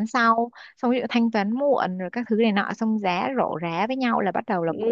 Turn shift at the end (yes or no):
no